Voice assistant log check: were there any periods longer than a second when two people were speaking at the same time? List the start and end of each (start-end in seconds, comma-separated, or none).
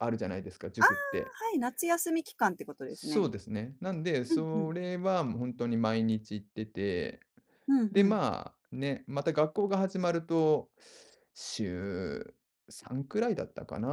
none